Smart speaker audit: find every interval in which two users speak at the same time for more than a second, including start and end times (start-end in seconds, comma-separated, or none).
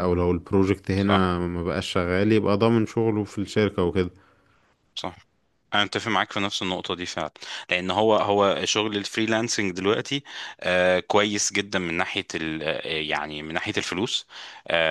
none